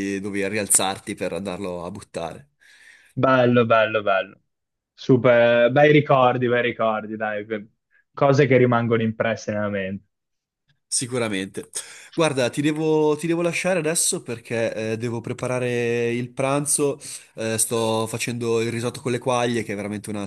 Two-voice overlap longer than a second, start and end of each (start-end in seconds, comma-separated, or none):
none